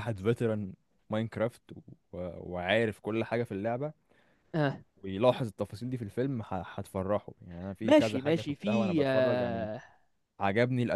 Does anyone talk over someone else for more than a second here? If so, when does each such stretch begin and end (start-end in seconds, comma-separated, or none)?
7.8-9.7